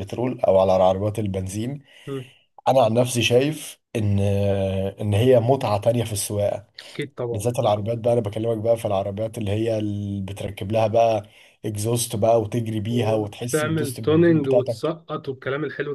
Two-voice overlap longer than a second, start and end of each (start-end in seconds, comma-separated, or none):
12.9-14.9